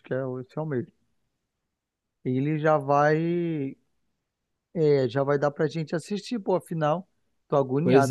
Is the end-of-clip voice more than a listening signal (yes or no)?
yes